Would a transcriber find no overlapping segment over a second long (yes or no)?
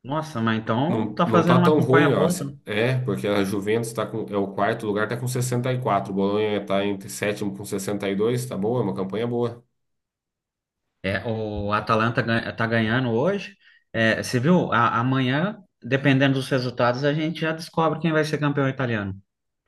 no